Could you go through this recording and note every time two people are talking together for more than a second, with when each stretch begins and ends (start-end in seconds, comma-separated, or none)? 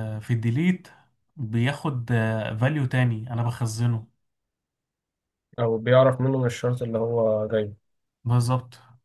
none